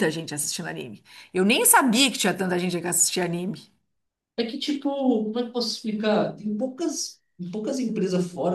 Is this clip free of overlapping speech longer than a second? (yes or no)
yes